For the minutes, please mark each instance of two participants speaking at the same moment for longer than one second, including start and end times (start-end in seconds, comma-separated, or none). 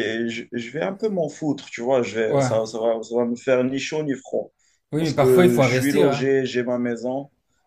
5.0-6.3